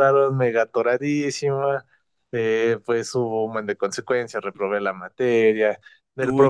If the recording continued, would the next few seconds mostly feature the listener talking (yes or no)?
no